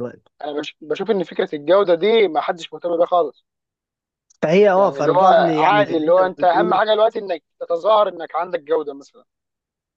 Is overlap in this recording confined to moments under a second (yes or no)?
no